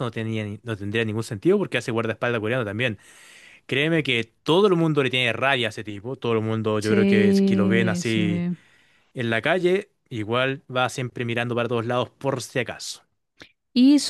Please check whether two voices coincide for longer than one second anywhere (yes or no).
yes